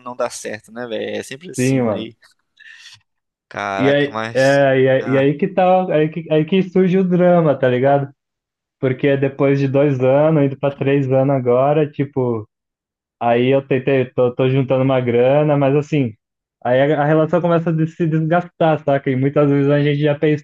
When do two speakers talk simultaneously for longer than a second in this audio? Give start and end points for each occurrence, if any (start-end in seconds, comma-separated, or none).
3.8-5.3